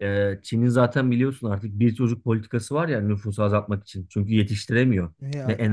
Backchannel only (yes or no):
yes